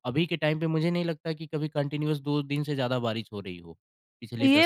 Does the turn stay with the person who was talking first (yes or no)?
no